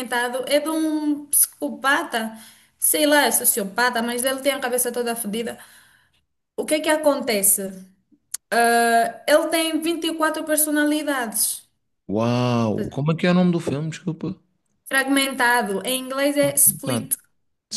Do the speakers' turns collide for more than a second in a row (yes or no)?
no